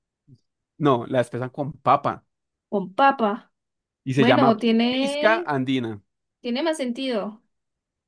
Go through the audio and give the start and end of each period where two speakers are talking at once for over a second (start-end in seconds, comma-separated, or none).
4.2-5.5